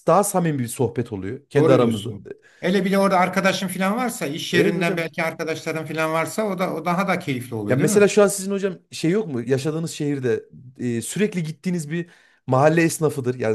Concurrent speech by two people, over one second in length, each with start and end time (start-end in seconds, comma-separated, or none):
none